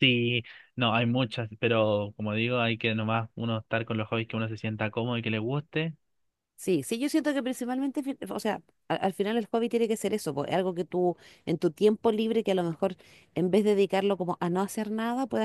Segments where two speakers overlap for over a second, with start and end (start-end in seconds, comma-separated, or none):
none